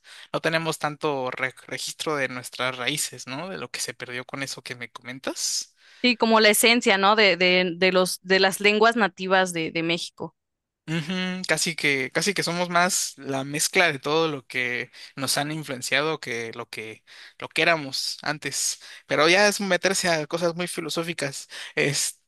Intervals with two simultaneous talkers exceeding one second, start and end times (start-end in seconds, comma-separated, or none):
none